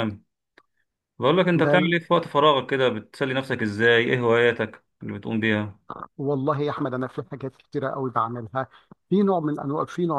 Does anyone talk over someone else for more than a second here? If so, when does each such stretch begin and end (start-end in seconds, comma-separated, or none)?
none